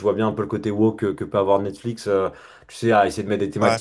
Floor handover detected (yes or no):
no